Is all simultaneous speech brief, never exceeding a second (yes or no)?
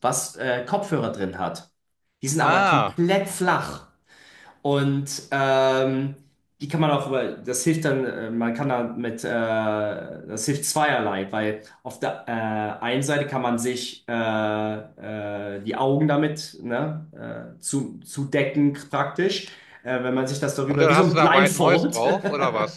no